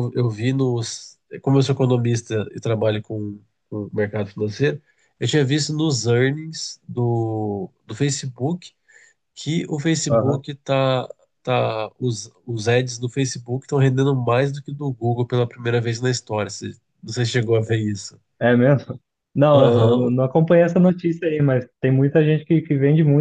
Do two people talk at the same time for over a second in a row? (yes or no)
no